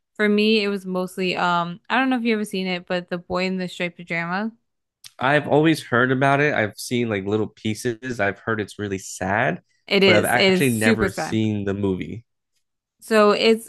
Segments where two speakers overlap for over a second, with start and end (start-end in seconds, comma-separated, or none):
10.0-11.4